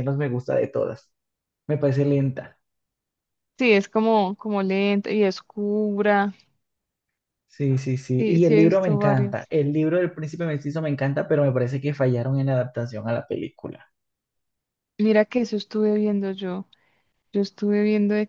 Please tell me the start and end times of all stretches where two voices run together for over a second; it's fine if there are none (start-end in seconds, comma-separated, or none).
8.2-9.5